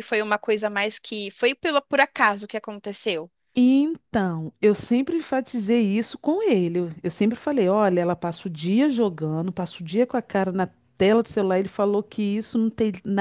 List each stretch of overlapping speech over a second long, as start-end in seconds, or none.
none